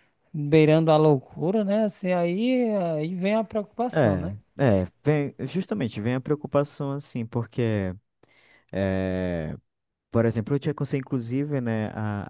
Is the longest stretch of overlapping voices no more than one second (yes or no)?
yes